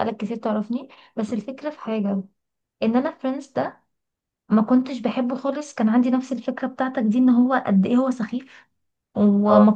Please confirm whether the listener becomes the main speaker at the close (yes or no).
no